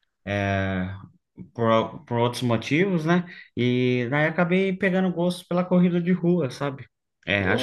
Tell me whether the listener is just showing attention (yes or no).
yes